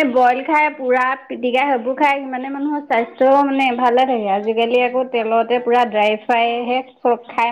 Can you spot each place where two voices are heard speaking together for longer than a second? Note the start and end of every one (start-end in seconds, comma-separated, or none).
4.3-6.8